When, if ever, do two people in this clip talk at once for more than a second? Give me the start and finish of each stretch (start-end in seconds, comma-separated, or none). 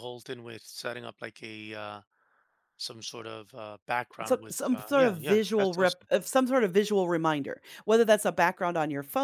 4.2-6.1